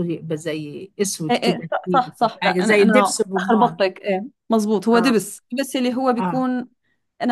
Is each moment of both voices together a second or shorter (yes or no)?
no